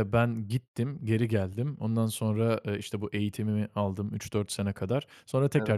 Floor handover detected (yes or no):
no